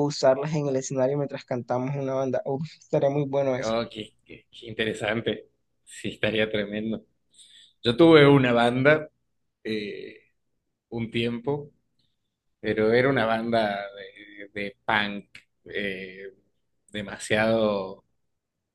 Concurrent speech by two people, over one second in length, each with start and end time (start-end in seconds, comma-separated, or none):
none